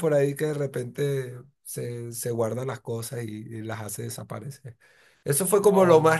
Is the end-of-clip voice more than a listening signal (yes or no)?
no